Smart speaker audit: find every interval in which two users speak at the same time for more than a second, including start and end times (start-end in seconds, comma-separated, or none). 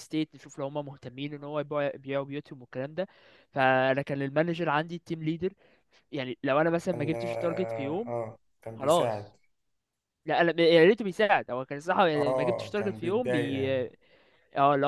6.9-8.1, 12.2-13.7